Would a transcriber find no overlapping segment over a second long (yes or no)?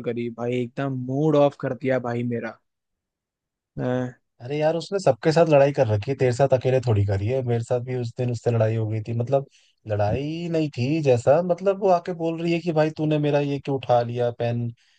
yes